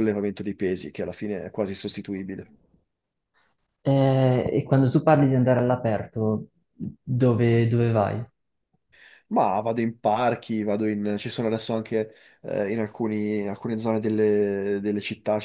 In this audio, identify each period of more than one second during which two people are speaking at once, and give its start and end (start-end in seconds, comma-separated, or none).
none